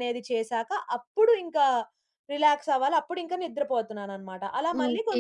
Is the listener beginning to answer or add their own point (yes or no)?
yes